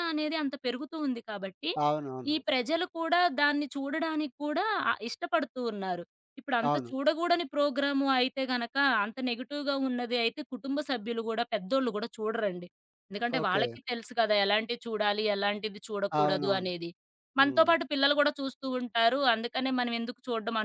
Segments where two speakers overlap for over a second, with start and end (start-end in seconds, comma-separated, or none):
none